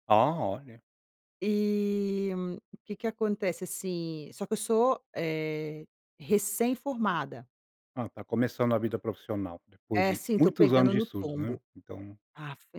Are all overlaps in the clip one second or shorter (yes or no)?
no